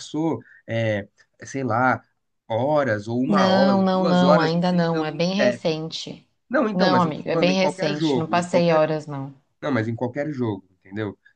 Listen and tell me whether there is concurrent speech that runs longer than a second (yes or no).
yes